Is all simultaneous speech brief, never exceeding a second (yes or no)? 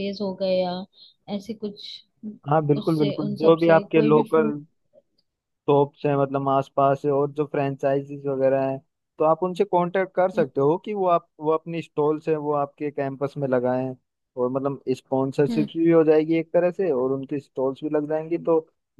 no